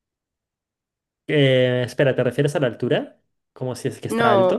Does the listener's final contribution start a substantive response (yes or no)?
yes